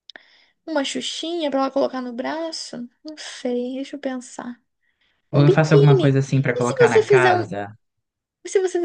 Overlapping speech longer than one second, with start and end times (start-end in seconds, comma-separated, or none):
5.3-7.5